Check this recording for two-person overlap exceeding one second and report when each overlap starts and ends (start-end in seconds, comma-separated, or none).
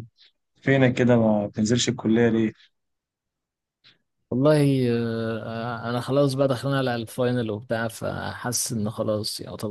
none